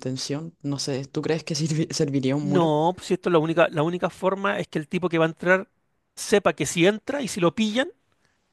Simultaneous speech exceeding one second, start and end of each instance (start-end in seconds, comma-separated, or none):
none